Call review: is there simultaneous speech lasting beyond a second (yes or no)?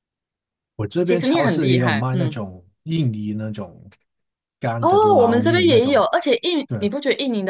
yes